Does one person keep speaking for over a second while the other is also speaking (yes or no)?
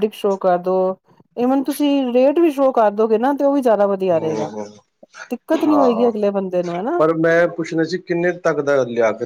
no